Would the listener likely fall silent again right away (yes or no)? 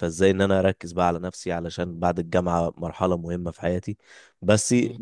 yes